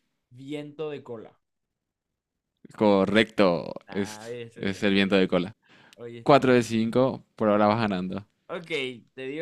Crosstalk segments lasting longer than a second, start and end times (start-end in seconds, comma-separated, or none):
3.9-5.4